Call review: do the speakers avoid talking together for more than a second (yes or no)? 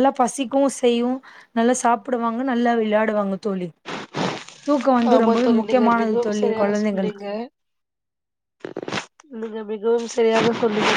no